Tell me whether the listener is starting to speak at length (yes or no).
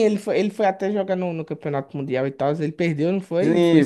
yes